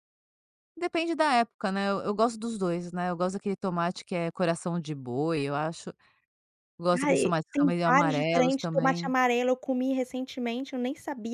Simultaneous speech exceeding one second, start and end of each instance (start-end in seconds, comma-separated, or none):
6.9-9.1